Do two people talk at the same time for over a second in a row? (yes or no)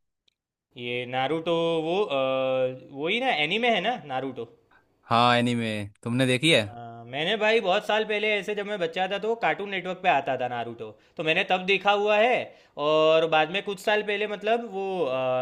no